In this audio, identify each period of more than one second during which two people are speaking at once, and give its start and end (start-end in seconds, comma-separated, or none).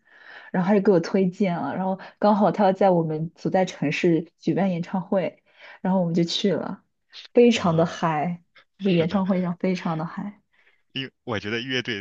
none